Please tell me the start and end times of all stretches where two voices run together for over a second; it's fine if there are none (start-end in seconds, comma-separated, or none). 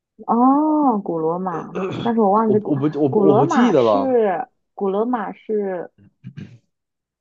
2.5-4.2